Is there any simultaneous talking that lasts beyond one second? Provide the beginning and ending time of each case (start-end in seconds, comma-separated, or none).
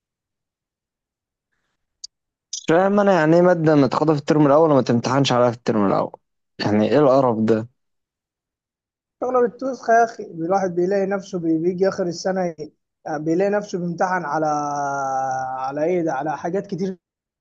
none